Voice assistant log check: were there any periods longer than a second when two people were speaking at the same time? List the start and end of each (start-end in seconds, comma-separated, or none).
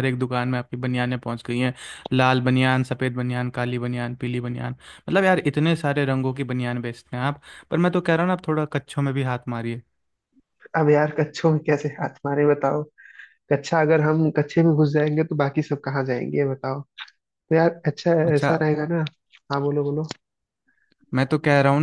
none